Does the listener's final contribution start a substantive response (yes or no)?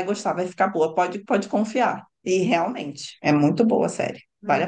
yes